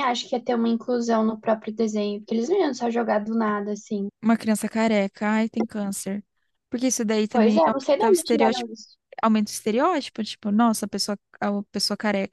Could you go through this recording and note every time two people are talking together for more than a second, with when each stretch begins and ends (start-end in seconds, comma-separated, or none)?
7.3-8.7